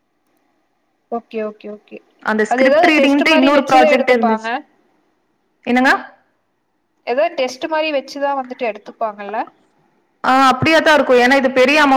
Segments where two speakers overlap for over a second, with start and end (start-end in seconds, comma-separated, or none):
2.5-4.5